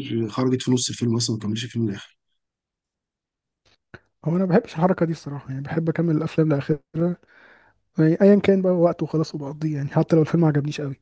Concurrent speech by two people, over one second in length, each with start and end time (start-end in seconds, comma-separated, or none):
none